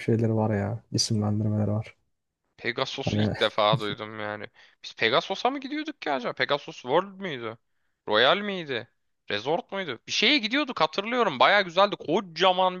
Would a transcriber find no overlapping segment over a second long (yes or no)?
yes